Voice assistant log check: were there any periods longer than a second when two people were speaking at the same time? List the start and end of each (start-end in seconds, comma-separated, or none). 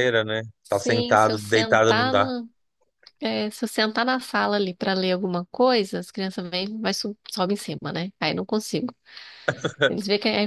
0.6-2.3